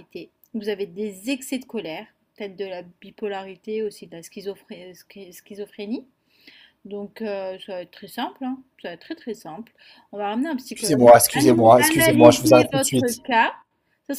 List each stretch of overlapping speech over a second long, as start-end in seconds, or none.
10.7-13.2